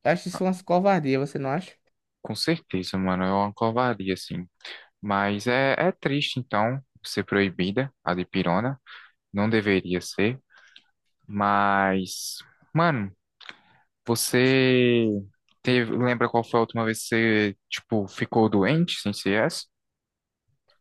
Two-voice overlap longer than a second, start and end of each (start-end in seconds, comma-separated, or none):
none